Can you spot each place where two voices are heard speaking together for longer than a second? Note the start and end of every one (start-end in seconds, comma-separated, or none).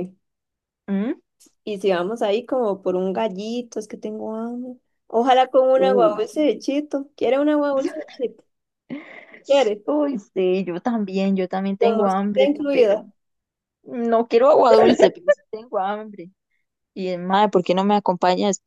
11.8-13.0